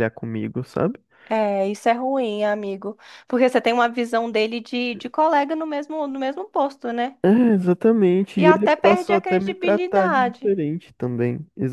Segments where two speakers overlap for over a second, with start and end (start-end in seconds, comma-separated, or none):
8.3-10.4